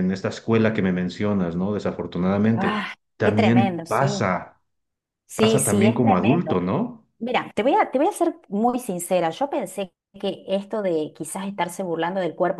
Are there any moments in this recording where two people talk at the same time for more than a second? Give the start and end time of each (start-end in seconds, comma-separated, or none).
2.5-4.3, 5.3-6.6